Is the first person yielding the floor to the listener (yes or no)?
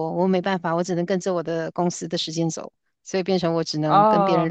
no